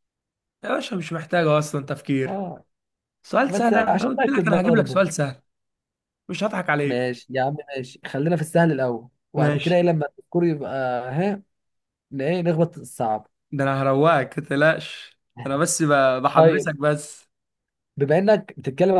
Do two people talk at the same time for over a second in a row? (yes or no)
yes